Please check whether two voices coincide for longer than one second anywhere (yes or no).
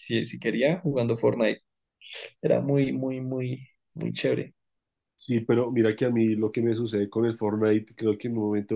no